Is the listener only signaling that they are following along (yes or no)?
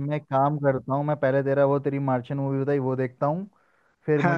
yes